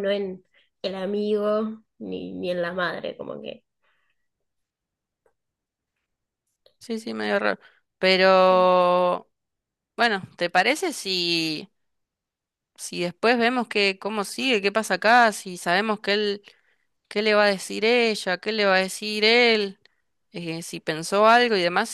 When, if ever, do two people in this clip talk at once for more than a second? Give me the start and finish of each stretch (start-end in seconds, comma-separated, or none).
none